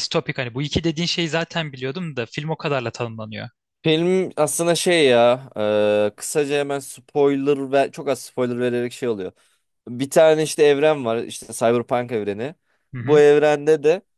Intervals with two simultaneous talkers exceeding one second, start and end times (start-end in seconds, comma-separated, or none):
none